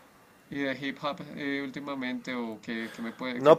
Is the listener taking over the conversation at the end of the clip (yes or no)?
yes